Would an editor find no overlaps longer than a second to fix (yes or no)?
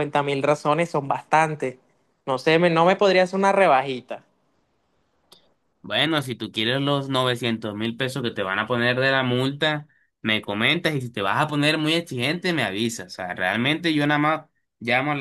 yes